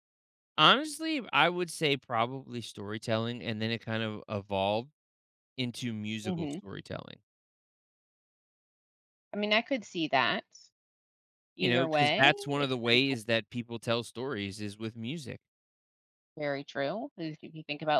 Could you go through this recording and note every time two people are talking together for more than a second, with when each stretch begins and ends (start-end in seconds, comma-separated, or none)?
11.6-13.2